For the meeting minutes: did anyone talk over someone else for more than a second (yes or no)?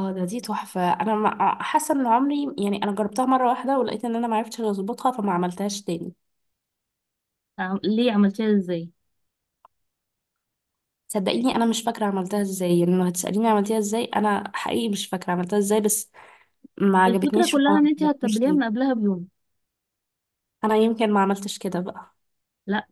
yes